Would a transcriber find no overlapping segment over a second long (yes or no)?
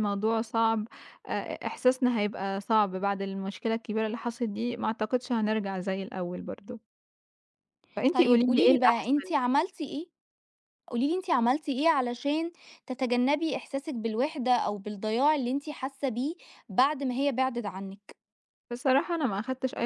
no